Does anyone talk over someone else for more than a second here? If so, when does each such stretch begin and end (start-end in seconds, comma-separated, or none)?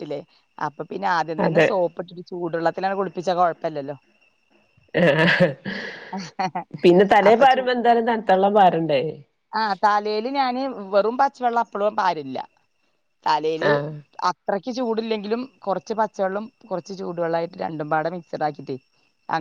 none